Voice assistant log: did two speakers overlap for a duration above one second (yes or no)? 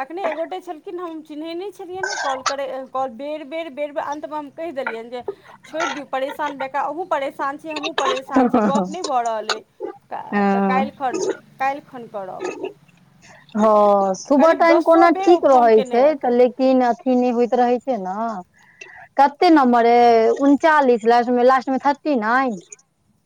yes